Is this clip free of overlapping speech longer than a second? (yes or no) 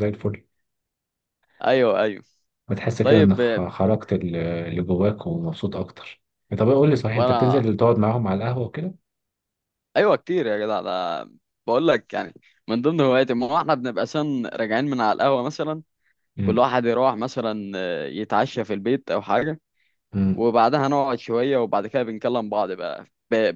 yes